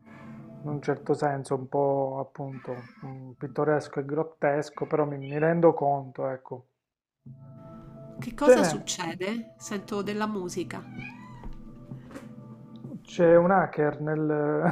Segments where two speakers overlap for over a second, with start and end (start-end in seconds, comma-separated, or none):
none